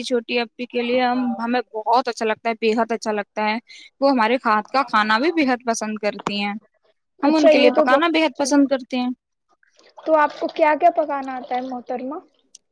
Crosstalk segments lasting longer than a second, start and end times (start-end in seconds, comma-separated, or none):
7.3-8.8